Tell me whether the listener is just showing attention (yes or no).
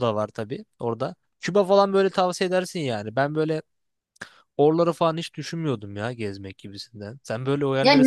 no